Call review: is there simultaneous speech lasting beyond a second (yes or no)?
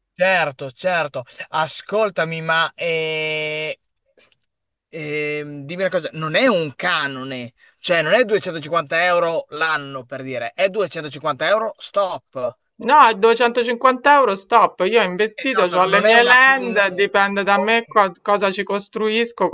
yes